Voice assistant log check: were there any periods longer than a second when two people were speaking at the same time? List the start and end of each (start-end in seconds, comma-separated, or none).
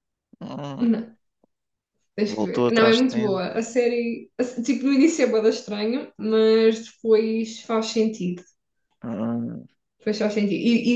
2.2-3.5